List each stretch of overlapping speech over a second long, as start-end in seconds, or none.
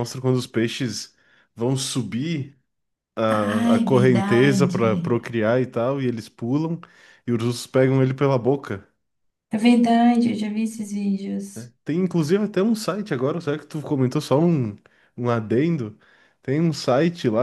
3.4-4.9